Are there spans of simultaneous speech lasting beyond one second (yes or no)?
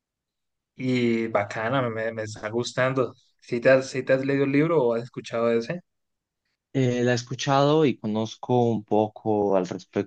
no